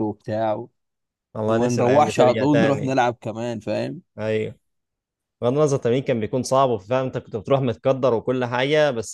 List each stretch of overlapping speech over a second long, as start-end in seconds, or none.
1.5-3.0